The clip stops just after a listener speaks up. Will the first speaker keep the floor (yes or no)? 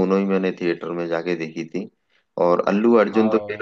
yes